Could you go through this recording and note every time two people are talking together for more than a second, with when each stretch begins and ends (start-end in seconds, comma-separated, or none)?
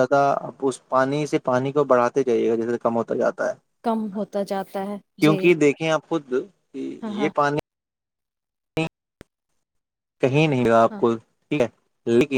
none